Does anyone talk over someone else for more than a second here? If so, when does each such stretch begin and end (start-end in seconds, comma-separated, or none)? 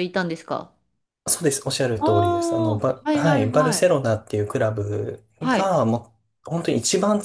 2.0-4.0